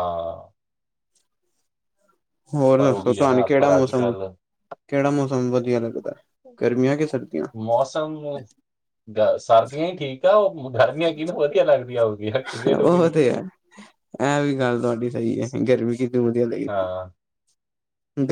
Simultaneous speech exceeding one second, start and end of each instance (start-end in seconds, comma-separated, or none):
2.8-4.1